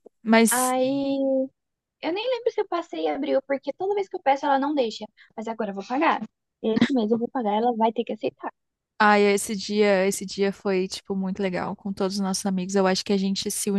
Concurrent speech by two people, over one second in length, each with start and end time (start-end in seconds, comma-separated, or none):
none